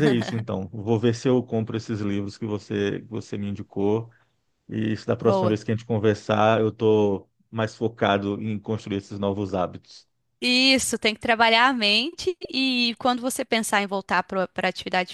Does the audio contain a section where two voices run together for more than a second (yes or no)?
no